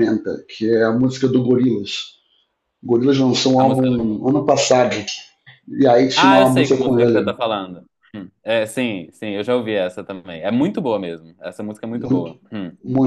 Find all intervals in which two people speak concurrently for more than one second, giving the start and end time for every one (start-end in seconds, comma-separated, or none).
6.1-7.3